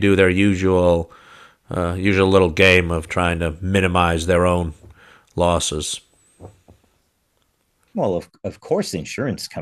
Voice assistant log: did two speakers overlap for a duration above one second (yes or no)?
no